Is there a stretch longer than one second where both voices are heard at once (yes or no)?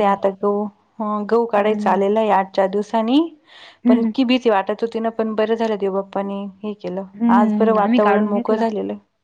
yes